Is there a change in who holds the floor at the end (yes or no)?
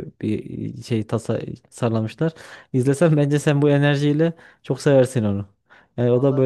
yes